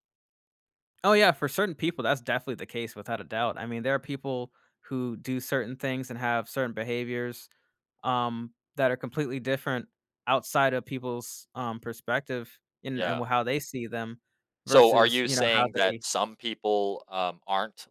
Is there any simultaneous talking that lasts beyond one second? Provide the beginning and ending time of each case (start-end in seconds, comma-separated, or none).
14.7-16.0